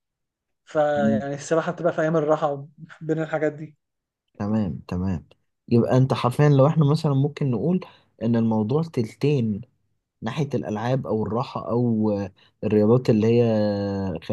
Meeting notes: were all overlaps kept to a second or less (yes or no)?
yes